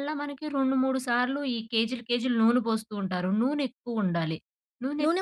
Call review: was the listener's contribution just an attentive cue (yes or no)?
no